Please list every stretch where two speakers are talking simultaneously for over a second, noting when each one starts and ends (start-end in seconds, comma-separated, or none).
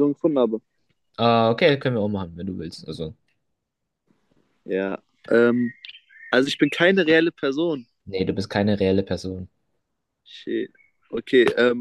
none